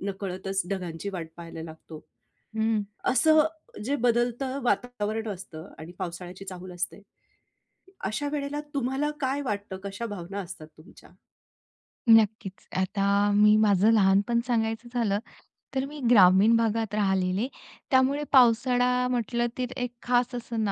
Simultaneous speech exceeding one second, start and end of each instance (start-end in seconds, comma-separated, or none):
none